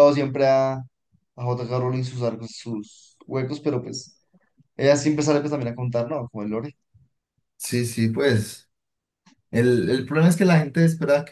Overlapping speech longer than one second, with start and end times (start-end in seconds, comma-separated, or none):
none